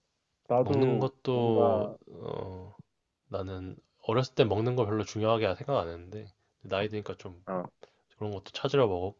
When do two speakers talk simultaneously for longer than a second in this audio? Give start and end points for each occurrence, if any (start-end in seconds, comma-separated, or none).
0.6-2.0